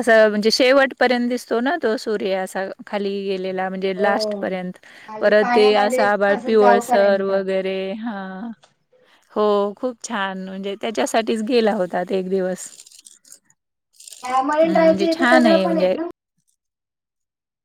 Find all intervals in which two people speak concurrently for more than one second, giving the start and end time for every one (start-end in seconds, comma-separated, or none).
5.2-7.3, 14.6-15.9